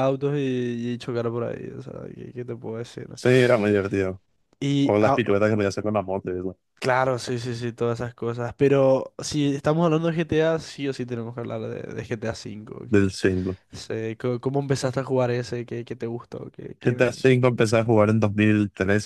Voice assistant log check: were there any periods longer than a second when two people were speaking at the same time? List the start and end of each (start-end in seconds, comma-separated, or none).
none